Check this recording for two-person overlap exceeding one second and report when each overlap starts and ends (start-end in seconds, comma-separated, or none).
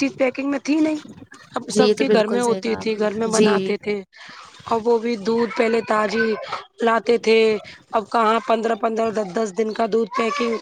1.7-3.7